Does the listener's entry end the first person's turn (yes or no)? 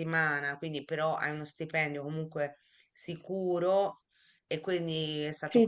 no